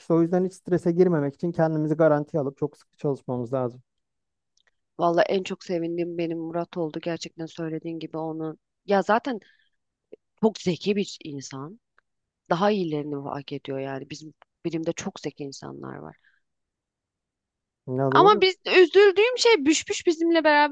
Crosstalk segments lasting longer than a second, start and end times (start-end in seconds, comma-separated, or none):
none